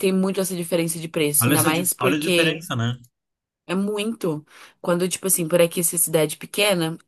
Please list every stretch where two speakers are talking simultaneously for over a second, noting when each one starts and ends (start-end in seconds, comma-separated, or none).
1.4-2.7